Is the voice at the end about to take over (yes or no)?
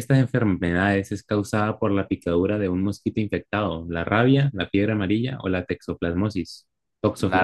yes